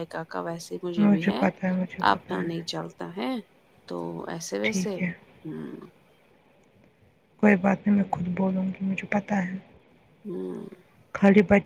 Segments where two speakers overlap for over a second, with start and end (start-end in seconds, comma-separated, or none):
none